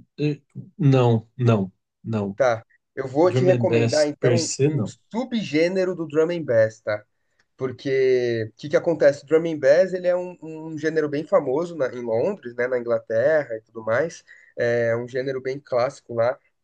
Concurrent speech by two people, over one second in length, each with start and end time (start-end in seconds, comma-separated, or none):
3.2-5.0